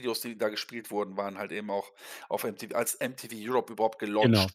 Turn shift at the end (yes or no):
yes